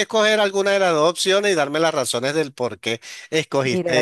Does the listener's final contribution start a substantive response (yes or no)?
yes